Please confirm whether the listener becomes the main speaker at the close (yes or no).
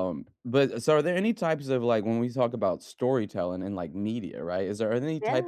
no